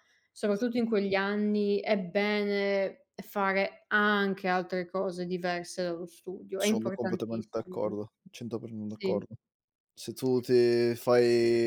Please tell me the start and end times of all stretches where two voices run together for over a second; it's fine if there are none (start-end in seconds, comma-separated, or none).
6.6-8.0